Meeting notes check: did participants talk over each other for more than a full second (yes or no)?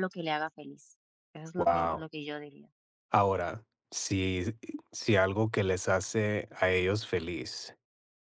no